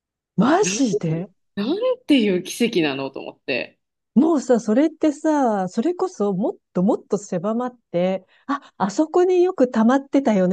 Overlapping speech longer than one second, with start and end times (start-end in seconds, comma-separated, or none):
none